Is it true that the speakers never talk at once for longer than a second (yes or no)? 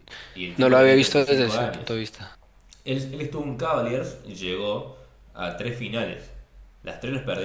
no